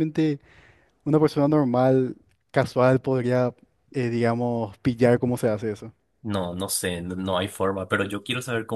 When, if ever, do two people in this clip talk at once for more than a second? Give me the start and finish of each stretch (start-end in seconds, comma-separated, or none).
none